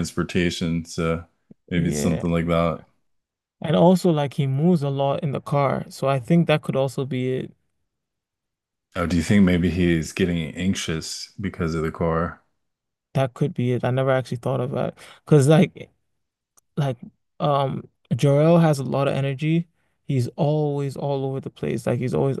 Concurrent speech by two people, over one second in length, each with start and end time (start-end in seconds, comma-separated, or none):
none